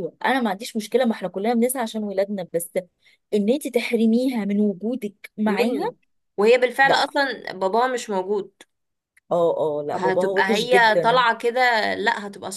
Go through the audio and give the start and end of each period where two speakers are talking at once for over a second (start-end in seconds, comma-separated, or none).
9.9-11.2